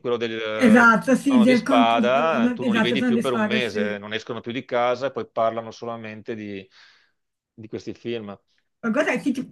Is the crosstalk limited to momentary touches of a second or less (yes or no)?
no